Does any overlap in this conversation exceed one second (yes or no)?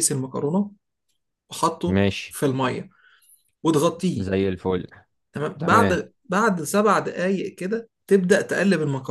no